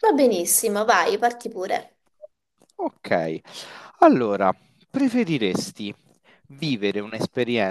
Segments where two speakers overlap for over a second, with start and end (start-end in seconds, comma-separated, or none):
none